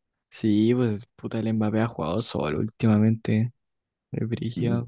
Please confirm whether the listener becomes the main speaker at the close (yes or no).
yes